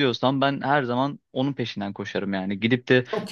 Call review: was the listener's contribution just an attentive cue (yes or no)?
yes